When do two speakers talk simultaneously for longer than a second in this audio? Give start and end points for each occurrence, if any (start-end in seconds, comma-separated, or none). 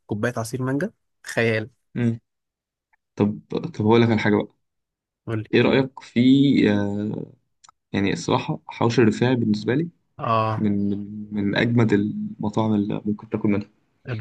none